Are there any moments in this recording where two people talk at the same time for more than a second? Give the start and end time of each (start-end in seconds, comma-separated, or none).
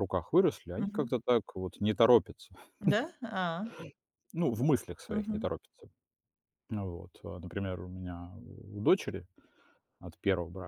none